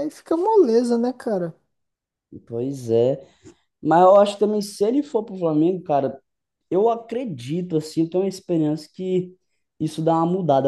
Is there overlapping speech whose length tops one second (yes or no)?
no